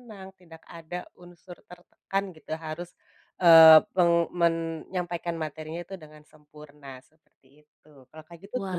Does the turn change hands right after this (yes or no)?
yes